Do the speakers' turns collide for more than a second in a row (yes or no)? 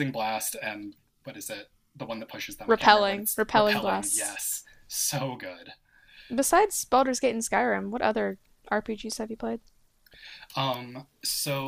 yes